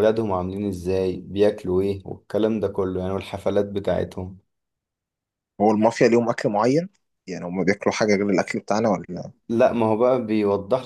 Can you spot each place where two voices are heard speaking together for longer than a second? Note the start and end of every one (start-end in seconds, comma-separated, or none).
none